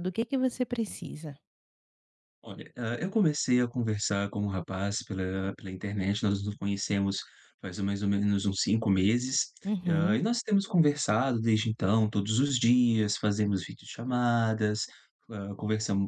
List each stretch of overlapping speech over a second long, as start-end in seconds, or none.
none